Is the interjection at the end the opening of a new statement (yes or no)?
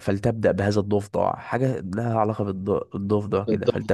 yes